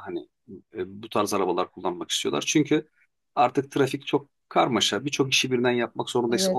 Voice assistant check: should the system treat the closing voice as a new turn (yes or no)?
no